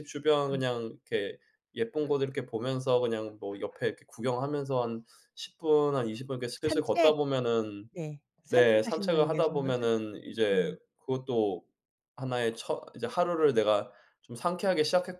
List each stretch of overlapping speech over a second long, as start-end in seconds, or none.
8.5-9.8